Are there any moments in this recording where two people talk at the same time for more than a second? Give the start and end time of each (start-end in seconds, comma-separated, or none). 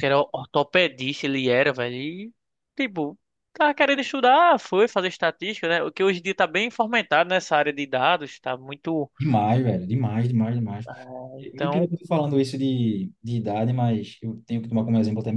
none